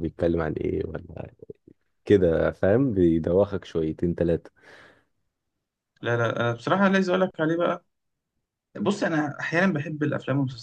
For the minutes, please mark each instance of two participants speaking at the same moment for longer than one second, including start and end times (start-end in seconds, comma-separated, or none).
none